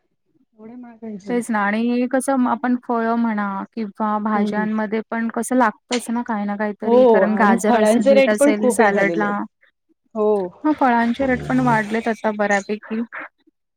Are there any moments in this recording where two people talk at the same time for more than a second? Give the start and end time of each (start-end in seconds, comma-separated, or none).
6.8-9.3